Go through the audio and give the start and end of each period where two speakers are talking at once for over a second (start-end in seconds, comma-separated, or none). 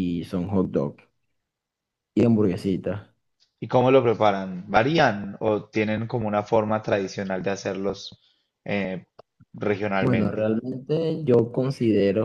none